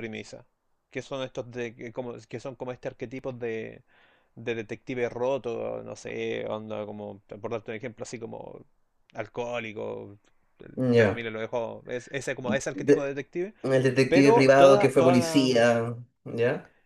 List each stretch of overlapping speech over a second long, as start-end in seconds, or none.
14.1-15.6